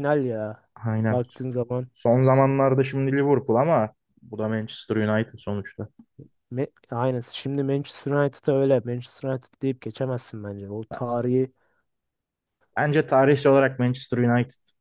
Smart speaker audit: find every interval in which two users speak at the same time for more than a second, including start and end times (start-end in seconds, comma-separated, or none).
none